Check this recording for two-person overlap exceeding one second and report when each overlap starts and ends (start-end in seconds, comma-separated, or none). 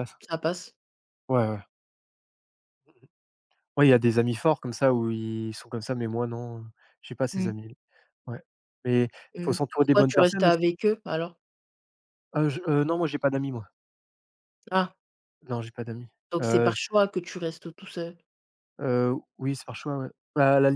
9.3-10.7